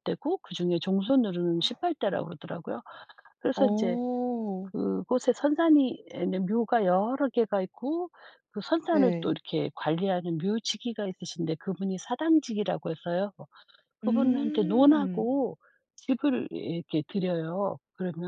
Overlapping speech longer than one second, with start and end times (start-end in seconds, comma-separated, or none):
14.0-15.3